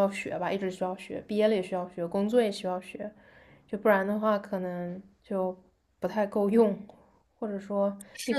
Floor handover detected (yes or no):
yes